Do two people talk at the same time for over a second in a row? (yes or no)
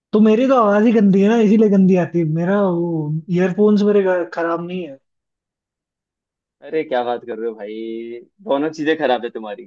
no